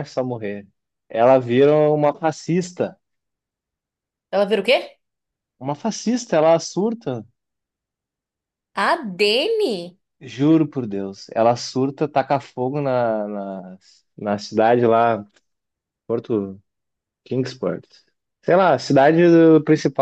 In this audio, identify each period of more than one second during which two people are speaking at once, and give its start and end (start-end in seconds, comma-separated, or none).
none